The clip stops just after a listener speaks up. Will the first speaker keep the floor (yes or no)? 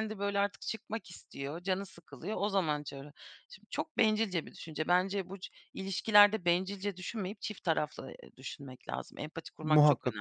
no